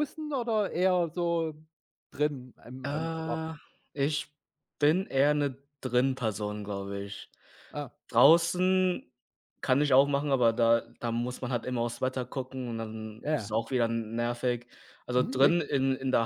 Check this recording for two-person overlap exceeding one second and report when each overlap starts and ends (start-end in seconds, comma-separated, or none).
none